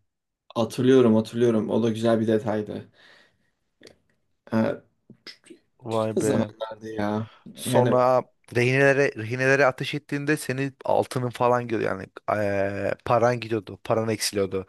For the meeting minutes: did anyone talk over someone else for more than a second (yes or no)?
no